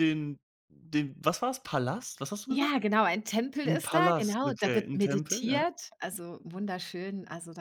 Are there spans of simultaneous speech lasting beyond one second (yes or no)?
yes